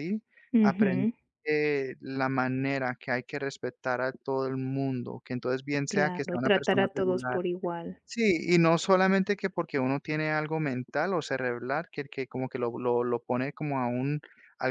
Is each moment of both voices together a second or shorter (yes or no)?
no